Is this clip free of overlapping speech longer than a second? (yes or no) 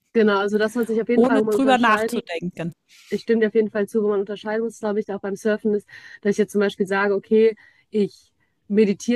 no